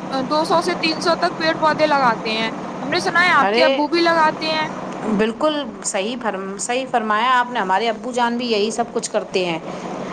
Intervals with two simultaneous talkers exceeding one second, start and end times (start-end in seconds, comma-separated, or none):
none